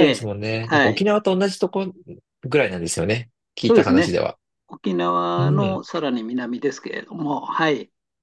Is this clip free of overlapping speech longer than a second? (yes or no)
yes